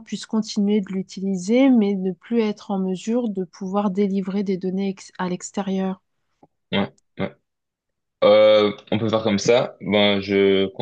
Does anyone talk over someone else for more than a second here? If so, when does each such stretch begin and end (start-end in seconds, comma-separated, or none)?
none